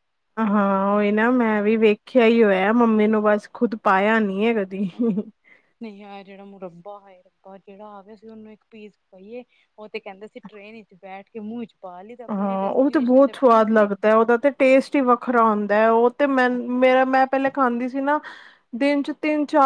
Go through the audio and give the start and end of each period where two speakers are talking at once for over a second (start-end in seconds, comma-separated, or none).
12.3-13.9